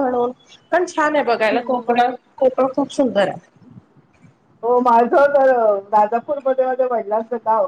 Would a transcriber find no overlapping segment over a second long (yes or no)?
yes